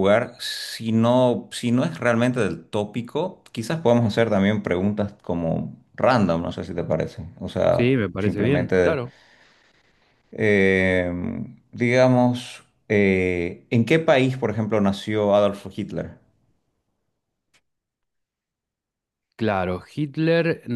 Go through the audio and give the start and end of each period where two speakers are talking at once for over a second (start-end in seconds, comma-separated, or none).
7.7-9.0